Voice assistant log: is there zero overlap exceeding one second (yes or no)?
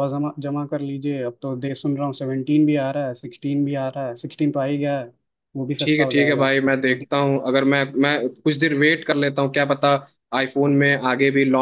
no